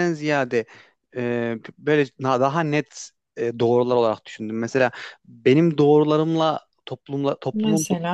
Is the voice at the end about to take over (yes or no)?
no